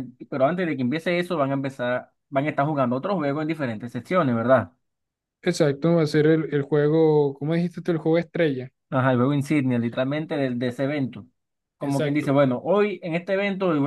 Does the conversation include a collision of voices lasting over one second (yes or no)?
no